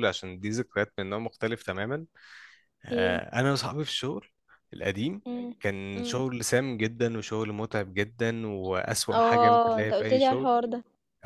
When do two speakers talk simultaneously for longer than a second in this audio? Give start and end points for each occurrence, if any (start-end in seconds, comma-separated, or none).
9.1-10.5